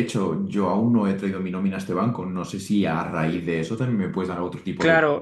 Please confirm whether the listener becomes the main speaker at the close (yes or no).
yes